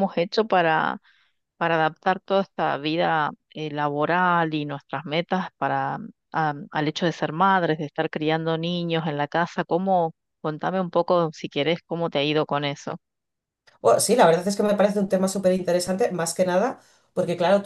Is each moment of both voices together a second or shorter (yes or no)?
yes